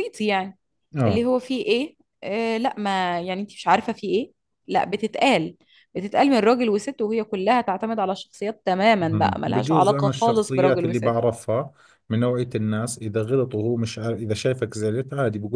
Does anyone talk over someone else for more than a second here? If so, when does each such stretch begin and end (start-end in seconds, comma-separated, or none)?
9.0-11.1